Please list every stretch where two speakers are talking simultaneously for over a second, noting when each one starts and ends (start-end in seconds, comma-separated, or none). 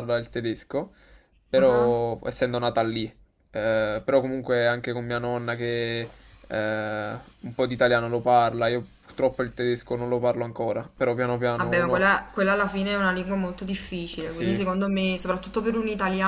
none